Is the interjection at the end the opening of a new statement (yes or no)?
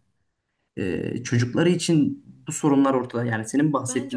yes